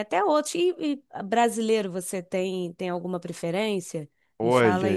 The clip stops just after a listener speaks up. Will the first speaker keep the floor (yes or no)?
no